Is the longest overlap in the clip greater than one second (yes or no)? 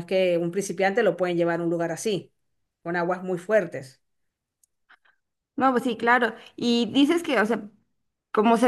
no